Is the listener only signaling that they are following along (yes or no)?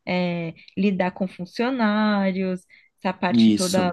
yes